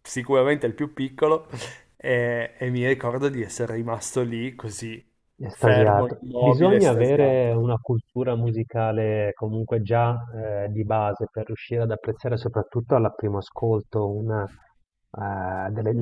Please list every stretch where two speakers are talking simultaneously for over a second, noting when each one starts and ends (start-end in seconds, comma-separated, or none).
5.5-7.6